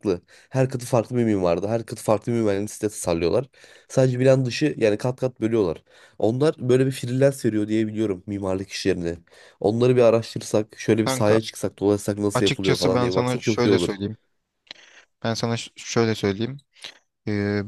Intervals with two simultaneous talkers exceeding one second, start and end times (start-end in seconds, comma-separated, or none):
12.3-14.0